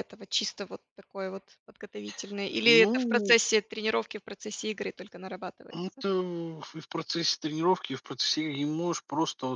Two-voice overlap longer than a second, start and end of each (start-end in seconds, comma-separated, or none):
none